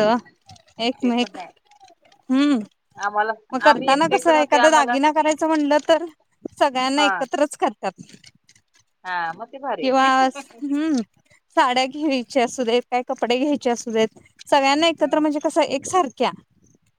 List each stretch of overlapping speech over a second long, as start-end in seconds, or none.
3.7-4.9